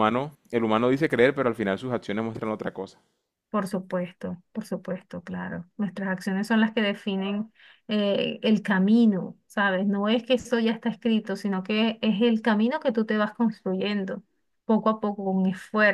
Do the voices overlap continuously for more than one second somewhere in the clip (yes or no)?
no